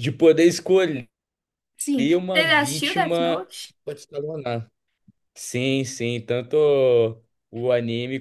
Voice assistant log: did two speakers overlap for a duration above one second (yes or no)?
yes